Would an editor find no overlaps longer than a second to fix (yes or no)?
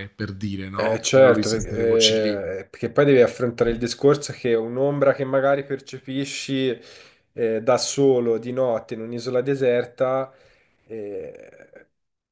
no